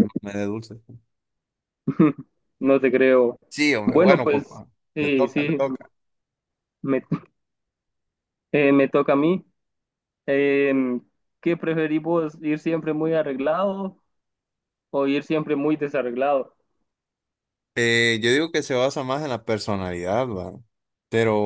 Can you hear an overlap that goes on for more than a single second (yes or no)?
yes